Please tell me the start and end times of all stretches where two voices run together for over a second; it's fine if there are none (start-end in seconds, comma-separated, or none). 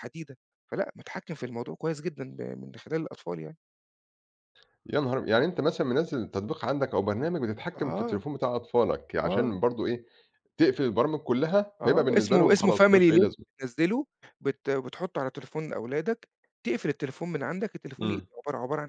11.8-13.4